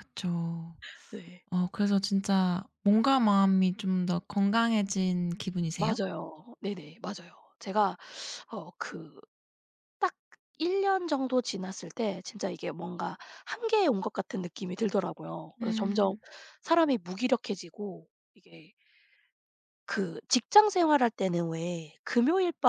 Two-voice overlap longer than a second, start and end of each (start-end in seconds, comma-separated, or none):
none